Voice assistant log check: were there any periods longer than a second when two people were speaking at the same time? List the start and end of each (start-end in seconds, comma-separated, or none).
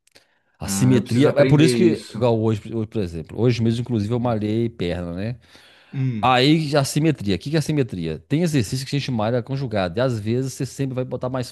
0.6-2.3